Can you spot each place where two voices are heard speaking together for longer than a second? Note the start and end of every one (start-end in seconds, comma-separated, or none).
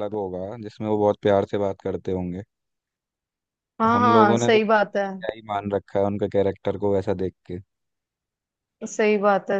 3.8-5.0